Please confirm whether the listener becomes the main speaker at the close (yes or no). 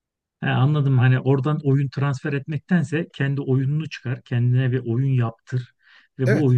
no